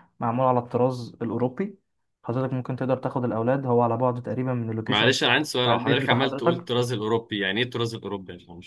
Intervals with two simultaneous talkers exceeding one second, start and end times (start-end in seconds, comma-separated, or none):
4.9-6.7